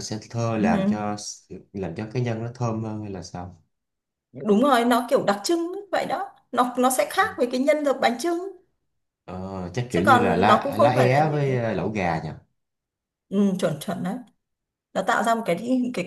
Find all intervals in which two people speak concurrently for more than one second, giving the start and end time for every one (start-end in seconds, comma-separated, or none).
9.9-11.7